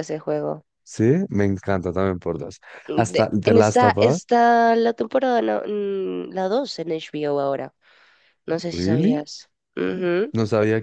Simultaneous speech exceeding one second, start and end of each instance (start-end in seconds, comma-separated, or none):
2.9-4.2